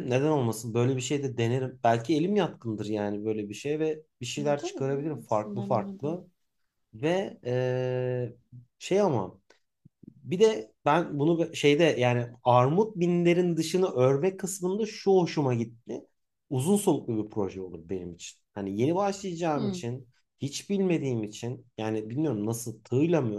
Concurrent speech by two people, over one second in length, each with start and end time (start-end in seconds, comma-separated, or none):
4.6-6.2